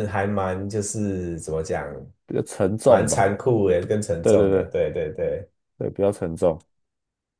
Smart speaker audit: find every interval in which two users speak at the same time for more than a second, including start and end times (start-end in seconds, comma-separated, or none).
none